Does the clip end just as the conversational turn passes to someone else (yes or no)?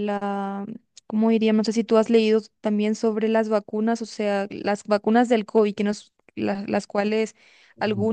no